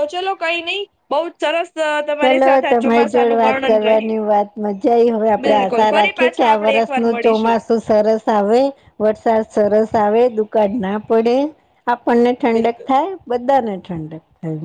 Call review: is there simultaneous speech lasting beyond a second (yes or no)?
yes